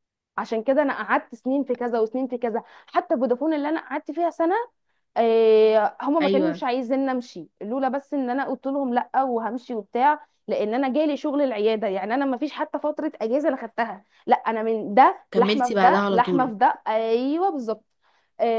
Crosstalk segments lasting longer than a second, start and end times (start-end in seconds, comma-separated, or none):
15.3-16.5